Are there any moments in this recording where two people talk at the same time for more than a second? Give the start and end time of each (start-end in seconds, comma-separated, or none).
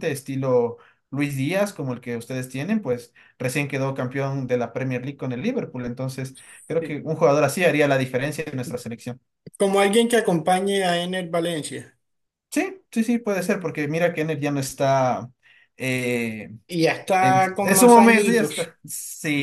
17.2-18.7